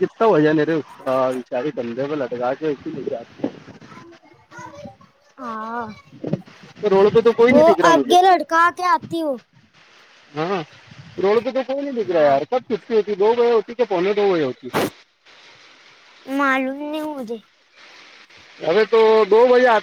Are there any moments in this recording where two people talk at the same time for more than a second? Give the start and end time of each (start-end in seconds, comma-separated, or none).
none